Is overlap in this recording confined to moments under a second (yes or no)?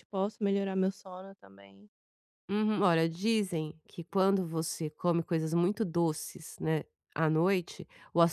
yes